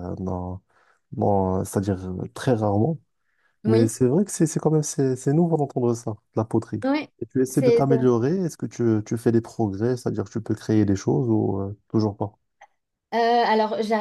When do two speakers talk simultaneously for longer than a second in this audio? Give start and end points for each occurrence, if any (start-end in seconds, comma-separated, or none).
none